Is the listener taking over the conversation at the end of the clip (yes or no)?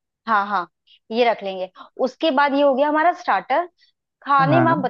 no